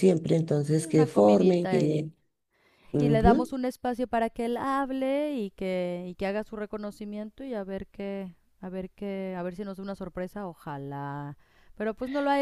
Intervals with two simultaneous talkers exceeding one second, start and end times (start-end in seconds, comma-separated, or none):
0.7-2.1